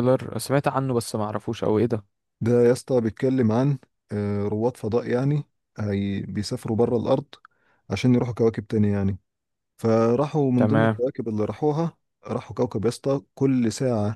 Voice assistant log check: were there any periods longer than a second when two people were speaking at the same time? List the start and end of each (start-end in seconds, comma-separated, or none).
none